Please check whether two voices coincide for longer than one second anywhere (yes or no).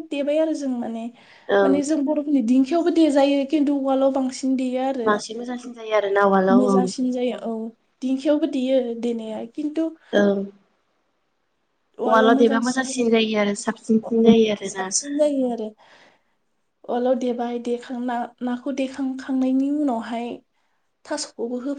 no